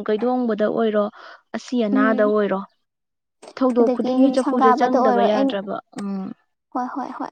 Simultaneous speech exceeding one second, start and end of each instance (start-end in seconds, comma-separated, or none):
3.8-5.5